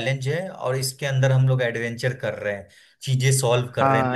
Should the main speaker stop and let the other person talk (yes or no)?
yes